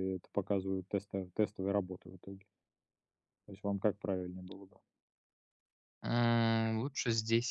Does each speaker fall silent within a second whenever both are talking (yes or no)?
yes